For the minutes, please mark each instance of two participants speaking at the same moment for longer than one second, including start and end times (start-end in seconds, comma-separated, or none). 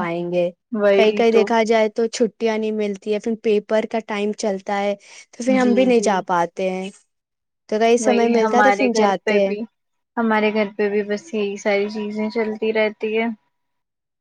none